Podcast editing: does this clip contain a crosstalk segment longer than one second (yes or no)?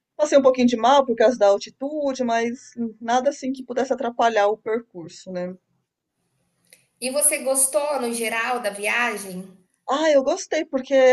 no